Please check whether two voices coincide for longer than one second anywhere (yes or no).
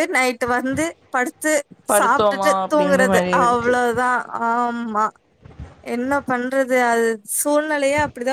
yes